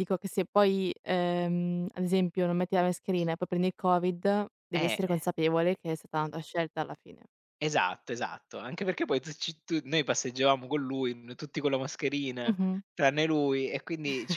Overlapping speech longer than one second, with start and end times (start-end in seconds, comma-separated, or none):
none